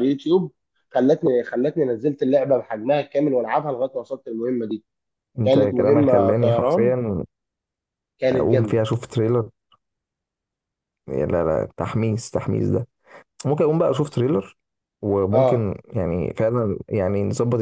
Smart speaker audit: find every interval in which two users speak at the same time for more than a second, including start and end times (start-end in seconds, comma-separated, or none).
5.4-6.9